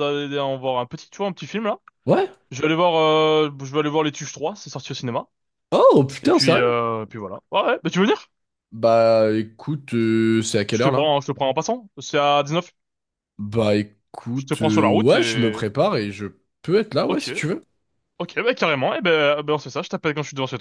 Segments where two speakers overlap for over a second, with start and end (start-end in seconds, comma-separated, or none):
14.3-15.6